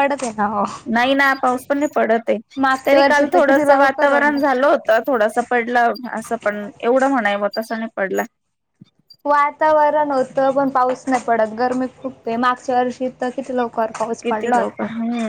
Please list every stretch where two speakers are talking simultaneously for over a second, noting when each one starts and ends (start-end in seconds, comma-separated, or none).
2.9-4.4